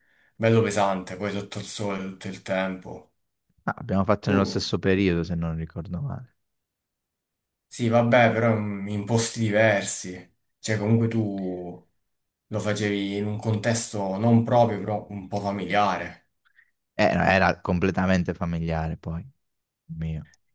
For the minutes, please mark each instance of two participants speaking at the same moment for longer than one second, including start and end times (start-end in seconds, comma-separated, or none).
none